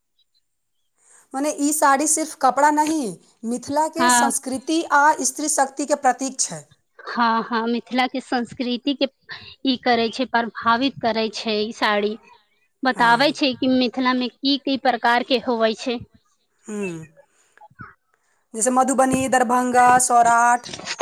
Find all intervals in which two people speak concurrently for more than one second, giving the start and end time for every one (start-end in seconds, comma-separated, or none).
none